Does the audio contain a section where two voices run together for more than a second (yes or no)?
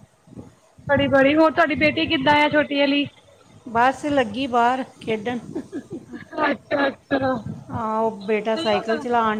no